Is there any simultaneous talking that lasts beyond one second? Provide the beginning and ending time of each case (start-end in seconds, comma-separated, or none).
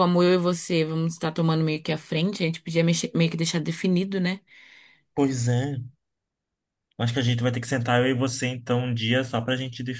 none